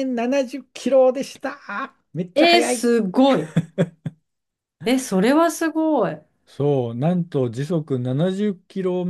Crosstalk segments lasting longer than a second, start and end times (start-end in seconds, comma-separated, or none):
none